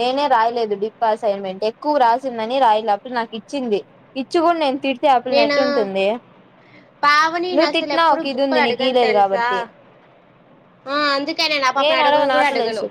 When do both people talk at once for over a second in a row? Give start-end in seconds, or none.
7.6-9.5